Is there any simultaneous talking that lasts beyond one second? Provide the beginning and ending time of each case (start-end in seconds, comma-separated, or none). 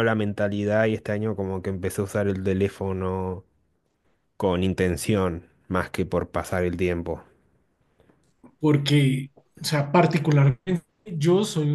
none